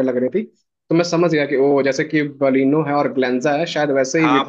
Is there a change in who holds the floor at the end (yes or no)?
yes